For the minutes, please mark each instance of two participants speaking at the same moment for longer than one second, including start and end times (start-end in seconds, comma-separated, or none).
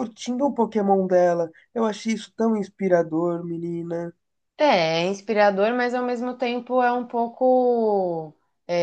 none